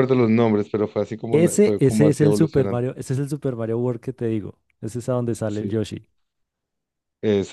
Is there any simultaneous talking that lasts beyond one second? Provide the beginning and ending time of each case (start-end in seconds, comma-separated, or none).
1.3-2.8